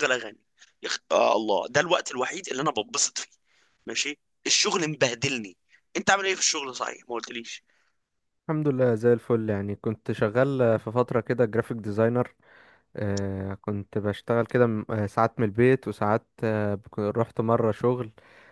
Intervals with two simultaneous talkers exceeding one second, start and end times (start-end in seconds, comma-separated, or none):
none